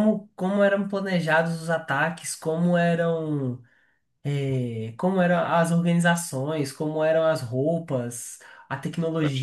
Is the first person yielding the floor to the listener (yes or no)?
no